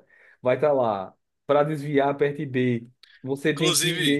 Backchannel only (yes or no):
yes